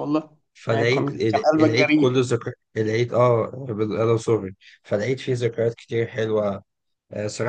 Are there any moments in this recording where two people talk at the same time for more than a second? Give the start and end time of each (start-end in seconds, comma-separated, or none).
0.5-2.1